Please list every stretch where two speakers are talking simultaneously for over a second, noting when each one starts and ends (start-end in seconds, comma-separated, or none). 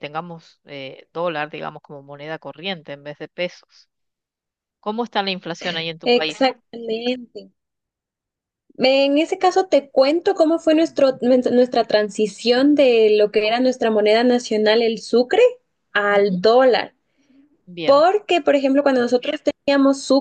none